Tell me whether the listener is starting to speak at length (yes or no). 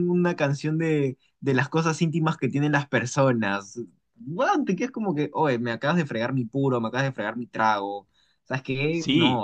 yes